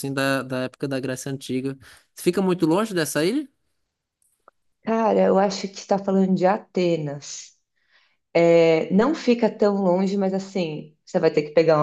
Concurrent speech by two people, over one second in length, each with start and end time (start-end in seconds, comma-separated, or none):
none